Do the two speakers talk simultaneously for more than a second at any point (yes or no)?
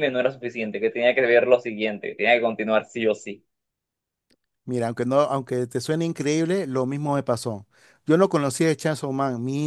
no